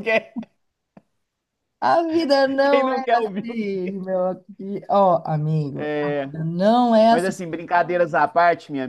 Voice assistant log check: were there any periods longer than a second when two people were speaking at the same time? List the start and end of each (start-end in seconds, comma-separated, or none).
2.6-3.9